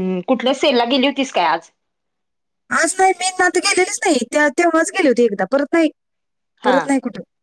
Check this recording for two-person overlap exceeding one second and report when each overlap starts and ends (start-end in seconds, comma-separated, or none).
none